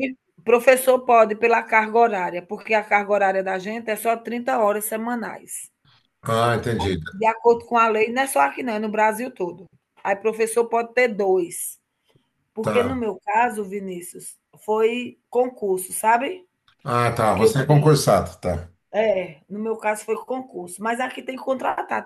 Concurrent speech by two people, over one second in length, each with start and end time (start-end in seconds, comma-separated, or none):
none